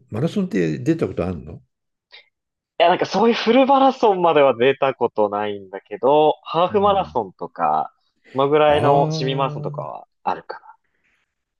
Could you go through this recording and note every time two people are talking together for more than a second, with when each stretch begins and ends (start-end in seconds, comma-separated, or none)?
8.7-9.9